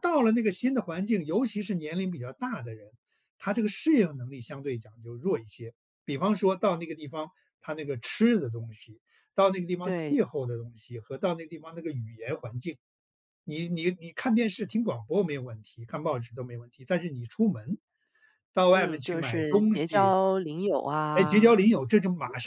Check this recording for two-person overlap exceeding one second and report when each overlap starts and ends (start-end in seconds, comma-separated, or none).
18.7-20.2